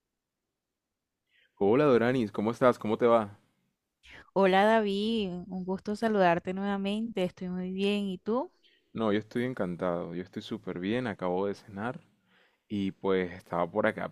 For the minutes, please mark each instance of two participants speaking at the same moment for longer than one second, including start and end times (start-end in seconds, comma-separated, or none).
none